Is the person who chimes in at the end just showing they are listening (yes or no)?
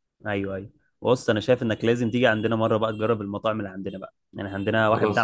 yes